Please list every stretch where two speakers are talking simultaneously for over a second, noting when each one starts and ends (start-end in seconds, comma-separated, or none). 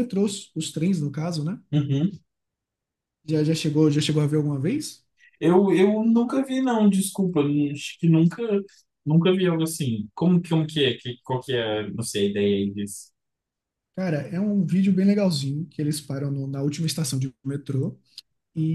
none